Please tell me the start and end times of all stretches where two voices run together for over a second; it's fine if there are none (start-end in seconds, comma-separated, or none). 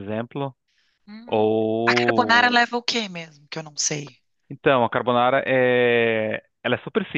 1.2-2.6